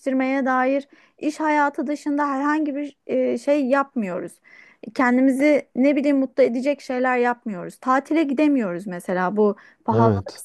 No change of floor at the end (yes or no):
yes